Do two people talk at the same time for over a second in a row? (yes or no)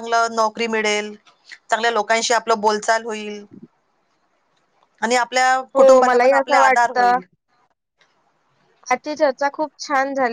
yes